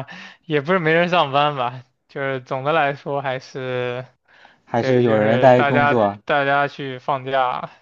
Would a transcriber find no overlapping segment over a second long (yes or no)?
no